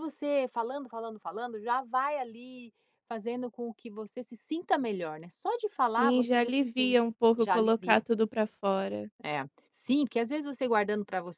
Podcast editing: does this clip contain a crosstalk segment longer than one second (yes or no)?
yes